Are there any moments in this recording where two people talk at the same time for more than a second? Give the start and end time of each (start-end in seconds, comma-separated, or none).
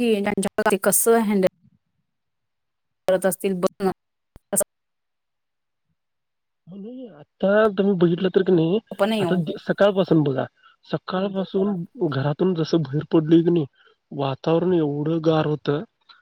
none